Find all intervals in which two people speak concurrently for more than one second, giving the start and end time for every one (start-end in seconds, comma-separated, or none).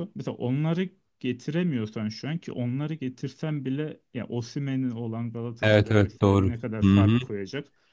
5.6-7.2